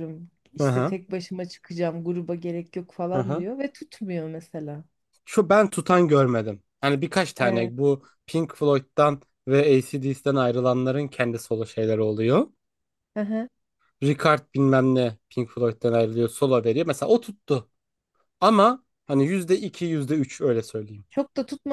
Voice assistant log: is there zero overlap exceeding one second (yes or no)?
yes